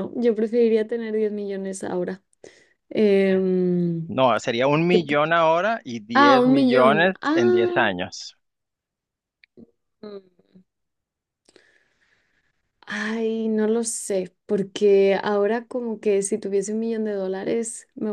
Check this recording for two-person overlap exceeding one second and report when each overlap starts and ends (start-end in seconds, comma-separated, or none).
6.2-7.8